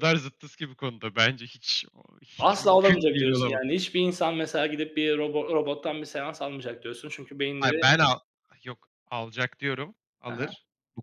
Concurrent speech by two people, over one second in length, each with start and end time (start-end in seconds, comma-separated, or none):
2.4-3.6